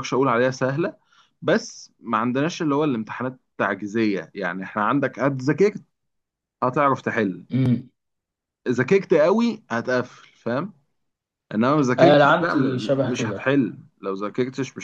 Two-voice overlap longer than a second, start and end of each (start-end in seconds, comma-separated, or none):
12.0-13.6